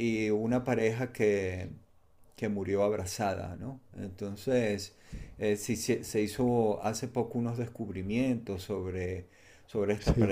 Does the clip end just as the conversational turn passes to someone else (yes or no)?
no